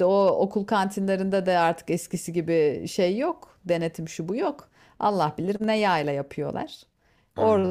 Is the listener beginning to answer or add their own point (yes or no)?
no